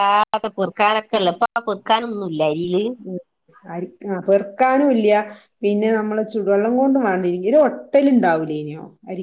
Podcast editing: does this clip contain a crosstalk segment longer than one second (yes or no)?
no